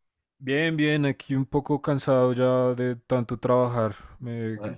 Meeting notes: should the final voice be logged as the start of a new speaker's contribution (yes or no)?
no